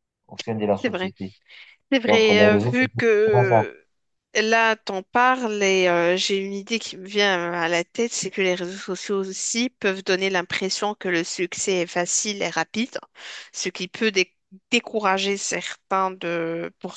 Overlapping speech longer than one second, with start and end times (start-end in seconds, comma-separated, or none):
2.0-3.6